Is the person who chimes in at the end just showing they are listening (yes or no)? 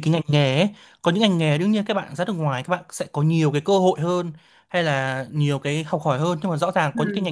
yes